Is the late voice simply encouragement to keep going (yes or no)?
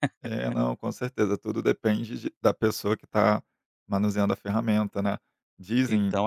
no